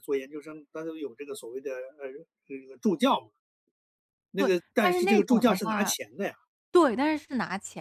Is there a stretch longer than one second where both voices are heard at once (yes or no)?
yes